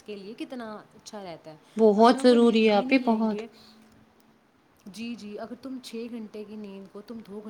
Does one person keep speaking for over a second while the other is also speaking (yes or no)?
yes